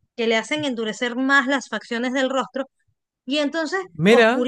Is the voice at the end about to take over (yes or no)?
yes